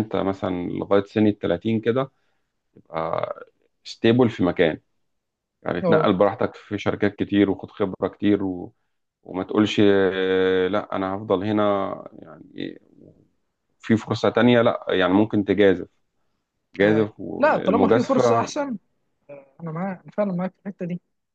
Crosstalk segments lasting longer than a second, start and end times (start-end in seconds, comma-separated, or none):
16.8-18.5